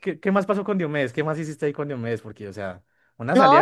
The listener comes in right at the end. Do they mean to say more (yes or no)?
yes